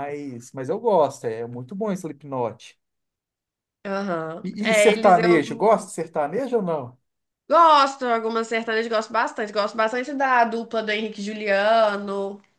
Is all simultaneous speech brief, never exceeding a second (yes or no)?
no